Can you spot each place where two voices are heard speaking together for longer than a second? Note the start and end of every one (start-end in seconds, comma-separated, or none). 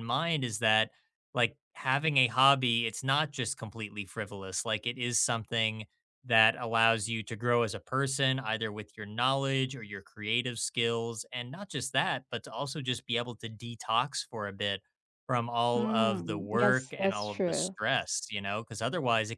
15.8-17.7